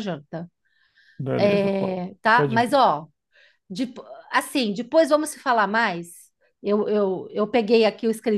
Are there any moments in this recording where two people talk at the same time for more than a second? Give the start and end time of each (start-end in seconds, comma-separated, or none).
1.4-2.8